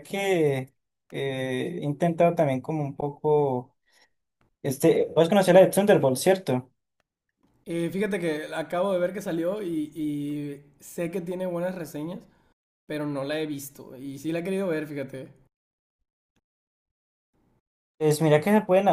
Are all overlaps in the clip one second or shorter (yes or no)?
yes